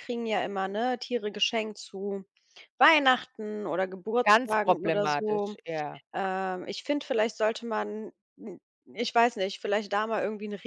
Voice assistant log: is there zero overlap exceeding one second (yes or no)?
no